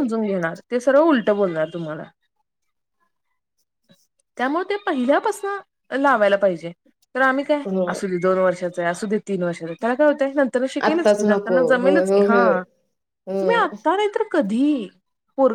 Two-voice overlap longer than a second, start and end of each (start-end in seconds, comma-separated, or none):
10.9-12.6